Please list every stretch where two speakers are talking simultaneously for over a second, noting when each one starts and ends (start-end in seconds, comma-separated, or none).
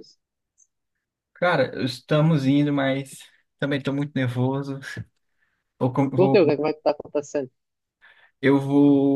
none